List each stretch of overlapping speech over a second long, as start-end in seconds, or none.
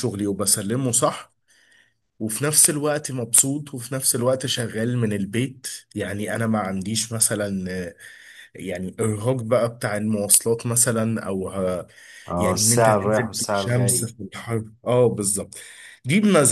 12.4-14.1